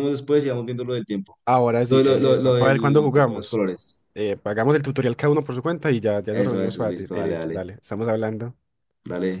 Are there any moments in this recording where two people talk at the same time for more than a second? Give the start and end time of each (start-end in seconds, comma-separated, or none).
1.9-3.6, 6.3-7.6